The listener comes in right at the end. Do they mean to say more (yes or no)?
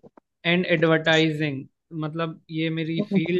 no